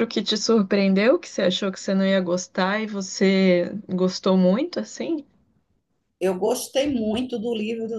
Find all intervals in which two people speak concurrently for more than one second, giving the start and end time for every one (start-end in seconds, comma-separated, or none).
none